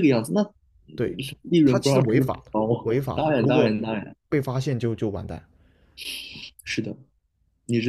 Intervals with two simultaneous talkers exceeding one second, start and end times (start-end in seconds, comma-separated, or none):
1.6-3.7